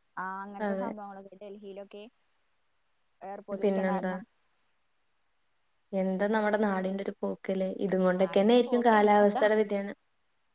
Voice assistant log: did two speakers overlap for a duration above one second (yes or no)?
yes